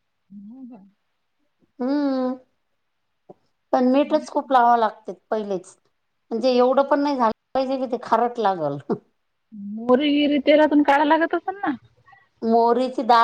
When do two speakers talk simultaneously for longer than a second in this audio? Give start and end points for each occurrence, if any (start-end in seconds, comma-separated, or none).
none